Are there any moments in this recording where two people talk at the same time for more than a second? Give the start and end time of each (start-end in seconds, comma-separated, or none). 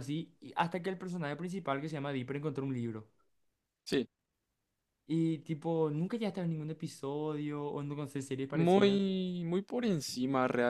none